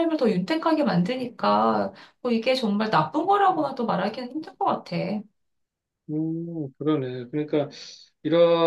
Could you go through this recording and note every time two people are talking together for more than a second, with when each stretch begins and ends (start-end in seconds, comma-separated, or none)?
none